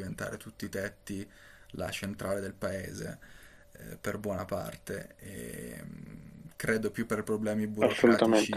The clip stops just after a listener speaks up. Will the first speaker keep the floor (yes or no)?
yes